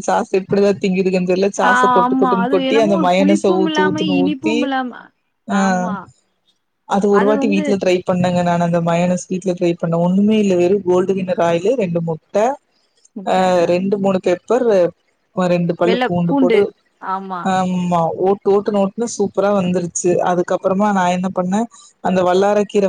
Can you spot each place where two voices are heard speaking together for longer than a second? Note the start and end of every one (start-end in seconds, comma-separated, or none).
1.7-4.6